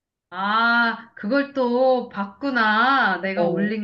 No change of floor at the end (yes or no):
yes